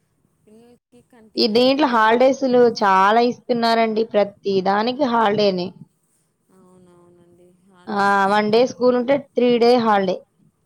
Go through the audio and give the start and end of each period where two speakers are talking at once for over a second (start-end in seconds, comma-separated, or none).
none